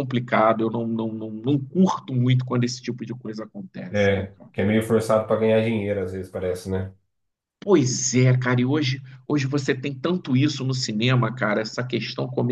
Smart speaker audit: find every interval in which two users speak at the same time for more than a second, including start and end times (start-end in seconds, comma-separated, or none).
none